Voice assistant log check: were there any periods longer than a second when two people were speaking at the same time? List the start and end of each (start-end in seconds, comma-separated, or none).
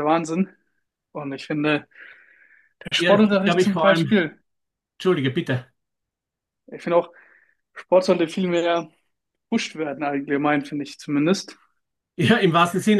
3.0-4.2